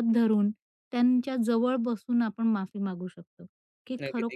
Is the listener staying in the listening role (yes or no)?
yes